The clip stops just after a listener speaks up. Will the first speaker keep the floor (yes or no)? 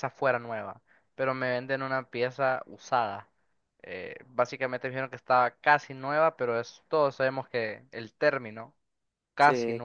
yes